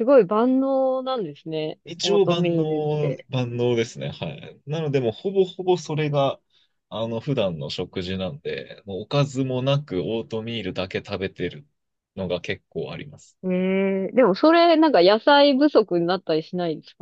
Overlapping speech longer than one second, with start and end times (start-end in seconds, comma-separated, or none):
1.9-3.2